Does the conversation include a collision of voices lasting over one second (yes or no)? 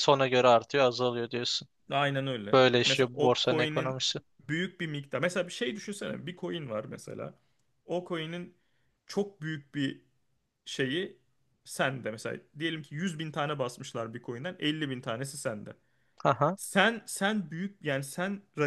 yes